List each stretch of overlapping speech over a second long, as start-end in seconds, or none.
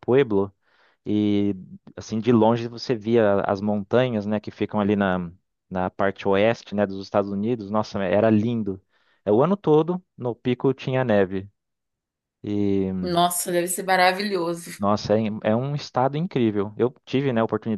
none